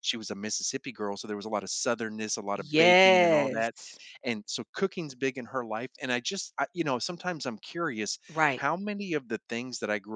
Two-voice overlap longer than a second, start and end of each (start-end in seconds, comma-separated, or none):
2.5-3.7